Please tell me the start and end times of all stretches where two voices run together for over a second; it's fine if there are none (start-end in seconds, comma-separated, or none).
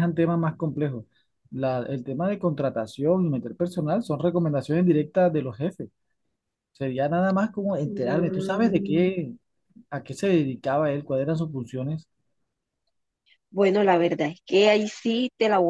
7.8-9.2